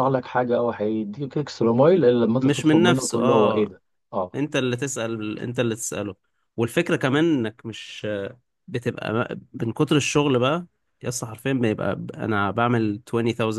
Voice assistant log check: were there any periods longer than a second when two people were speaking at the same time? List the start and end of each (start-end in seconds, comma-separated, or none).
2.4-3.8